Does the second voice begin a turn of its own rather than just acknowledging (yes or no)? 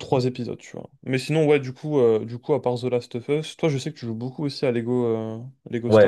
yes